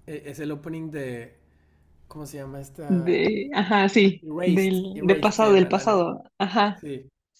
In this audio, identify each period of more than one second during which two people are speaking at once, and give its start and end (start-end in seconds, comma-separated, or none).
3.9-6.1